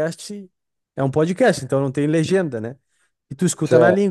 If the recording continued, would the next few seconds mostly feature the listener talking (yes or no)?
no